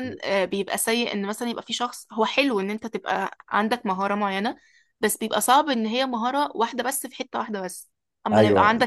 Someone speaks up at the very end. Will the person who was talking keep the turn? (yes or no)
no